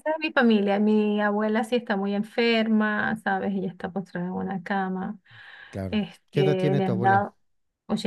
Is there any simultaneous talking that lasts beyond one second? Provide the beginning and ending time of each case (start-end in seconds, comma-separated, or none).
5.9-7.3